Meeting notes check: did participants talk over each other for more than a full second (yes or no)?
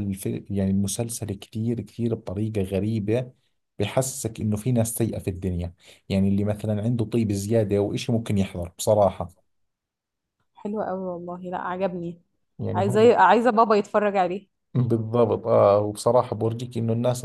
no